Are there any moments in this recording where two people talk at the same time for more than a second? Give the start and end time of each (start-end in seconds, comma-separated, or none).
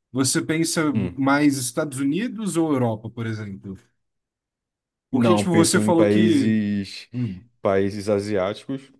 5.1-6.5